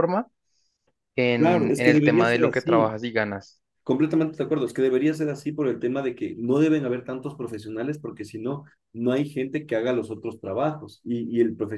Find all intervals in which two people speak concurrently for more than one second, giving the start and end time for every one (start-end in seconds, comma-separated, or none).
1.4-2.9